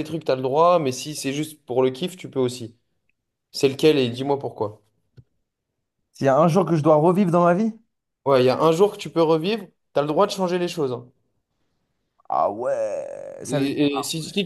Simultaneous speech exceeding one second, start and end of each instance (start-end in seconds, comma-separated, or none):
none